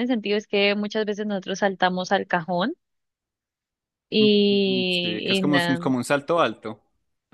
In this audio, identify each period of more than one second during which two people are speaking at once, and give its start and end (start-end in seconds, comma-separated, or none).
4.2-5.8